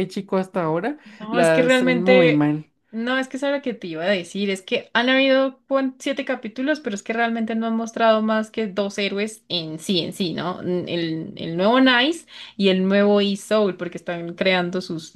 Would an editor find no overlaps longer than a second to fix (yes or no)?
no